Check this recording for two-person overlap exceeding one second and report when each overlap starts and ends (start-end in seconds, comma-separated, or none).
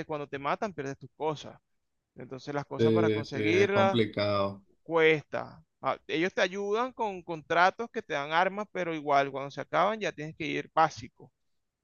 2.8-4.0